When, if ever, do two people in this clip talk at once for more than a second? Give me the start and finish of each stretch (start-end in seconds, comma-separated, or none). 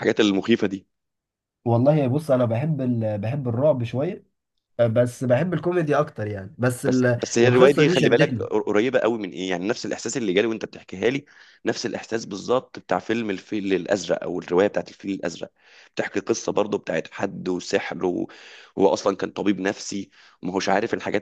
6.9-8.5